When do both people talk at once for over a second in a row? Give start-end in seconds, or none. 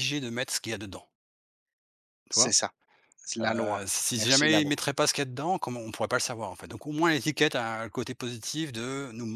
3.4-4.7